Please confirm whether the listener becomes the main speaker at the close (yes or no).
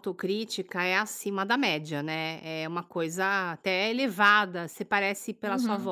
no